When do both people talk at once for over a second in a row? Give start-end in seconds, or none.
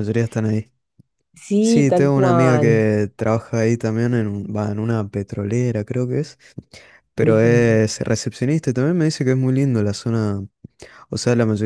1.6-2.9